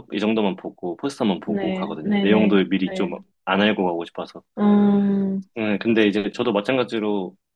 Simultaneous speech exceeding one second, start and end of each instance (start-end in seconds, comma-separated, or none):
1.4-3.1